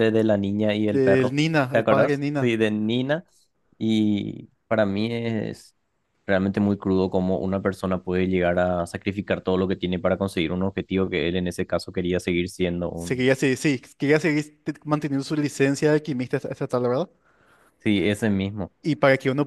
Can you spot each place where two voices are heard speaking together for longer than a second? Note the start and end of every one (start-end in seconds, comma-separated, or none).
0.9-2.5